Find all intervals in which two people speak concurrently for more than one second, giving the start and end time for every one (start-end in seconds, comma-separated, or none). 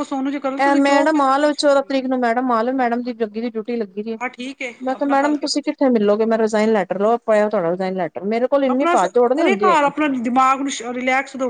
0.8-2.0, 4.9-6.2